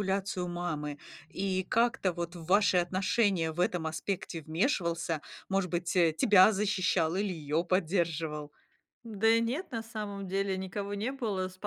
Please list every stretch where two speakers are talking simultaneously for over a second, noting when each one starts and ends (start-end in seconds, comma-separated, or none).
none